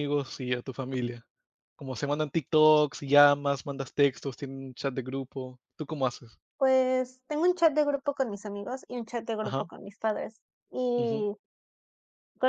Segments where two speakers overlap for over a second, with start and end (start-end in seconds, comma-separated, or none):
none